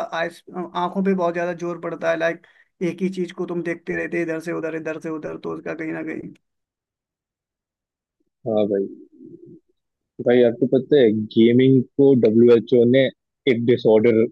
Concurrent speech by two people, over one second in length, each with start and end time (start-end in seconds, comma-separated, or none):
none